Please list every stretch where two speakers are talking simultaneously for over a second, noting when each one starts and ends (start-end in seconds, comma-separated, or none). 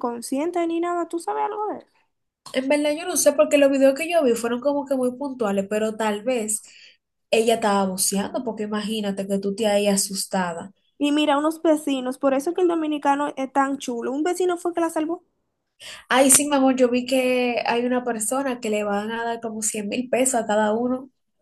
none